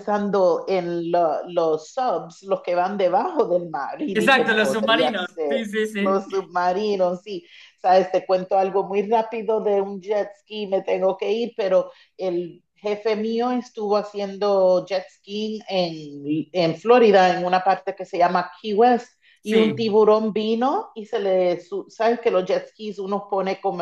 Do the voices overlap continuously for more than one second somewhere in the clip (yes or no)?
yes